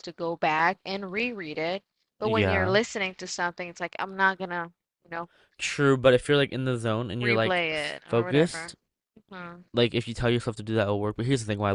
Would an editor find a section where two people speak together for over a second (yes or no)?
yes